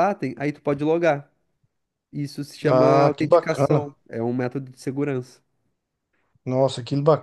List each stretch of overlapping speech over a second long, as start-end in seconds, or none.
2.6-3.9